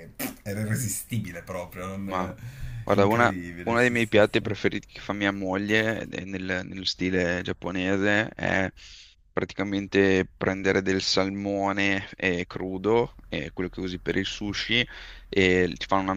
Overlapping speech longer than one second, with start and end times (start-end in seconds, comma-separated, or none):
3.0-4.5